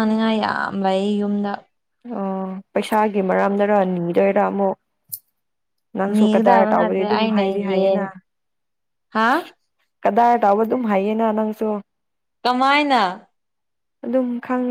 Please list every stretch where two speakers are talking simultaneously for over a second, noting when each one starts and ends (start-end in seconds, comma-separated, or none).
6.1-8.0